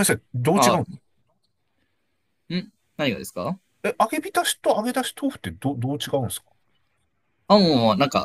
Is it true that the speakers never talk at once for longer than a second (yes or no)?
yes